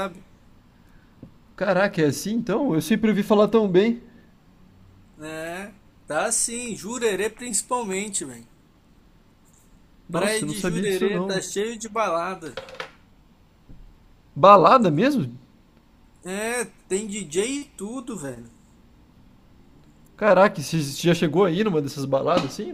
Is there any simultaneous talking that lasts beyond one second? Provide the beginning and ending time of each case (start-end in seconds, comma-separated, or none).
10.1-11.4